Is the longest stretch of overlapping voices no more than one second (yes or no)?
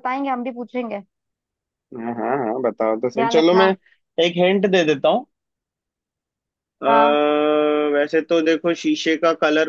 yes